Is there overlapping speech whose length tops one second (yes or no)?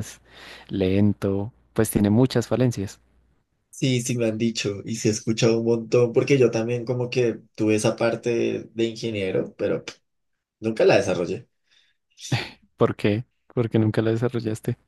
no